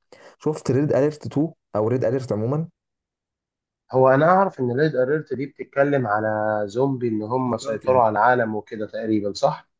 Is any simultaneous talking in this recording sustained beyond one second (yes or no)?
no